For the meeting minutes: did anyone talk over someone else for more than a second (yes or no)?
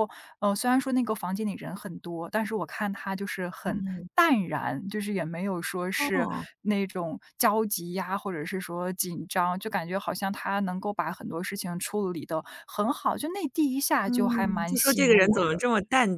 yes